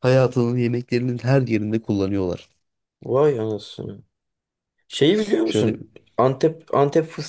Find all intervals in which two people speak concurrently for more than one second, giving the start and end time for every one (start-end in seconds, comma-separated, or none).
none